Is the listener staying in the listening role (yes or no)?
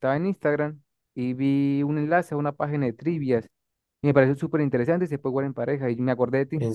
yes